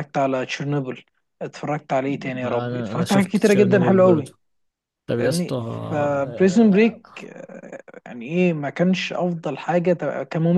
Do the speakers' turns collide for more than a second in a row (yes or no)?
yes